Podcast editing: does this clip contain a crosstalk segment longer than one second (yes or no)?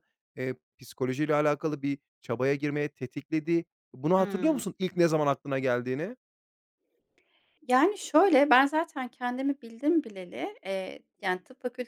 no